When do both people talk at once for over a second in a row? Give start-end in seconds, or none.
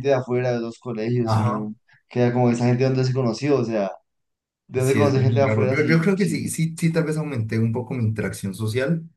4.8-6.5